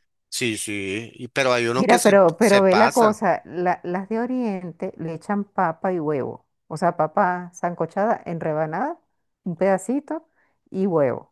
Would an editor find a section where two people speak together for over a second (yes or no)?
yes